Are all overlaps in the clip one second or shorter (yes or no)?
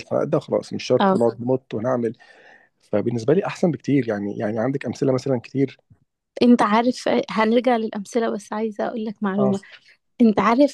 yes